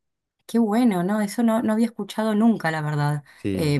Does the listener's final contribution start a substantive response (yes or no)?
no